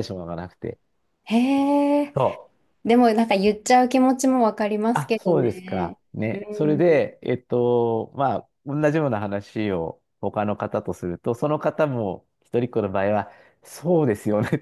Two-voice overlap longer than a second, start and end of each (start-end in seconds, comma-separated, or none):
4.9-6.8